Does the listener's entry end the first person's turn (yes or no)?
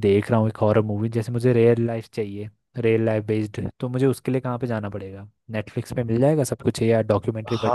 yes